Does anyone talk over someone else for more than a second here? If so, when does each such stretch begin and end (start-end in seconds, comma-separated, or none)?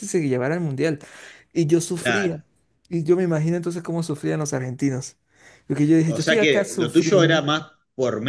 6.2-7.4